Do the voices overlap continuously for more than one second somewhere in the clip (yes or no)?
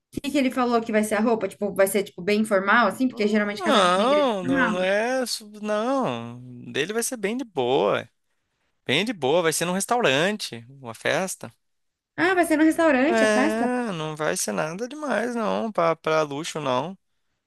yes